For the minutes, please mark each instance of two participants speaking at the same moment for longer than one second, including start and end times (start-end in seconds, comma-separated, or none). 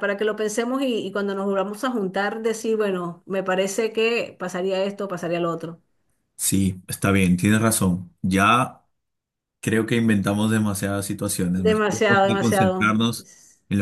11.6-13.0